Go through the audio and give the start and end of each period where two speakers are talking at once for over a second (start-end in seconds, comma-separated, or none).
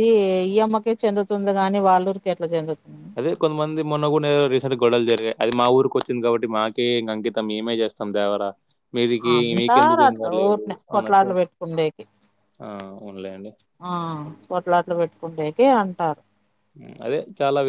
9.4-11.3